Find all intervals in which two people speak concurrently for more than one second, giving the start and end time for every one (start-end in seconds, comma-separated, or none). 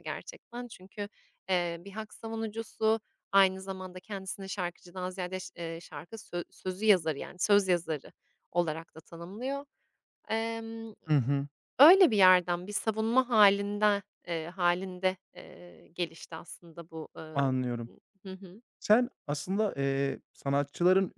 none